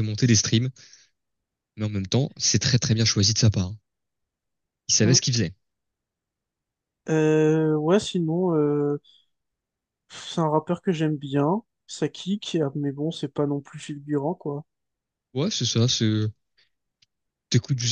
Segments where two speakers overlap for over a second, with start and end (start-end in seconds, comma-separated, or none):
none